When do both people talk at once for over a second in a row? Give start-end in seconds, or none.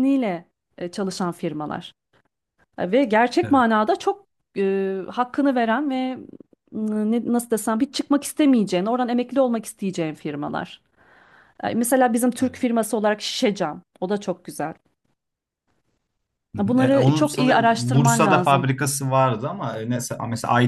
16.6-18.7